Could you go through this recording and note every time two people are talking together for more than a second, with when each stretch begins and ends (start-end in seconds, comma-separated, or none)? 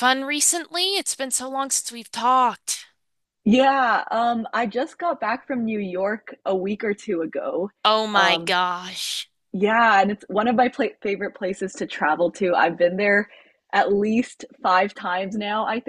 none